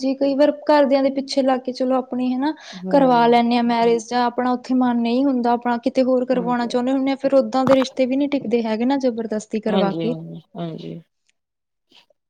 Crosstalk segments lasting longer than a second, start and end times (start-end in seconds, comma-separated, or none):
none